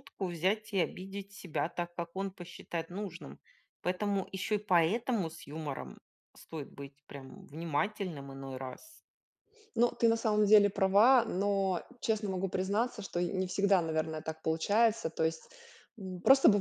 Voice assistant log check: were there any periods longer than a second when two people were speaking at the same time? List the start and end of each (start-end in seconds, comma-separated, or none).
none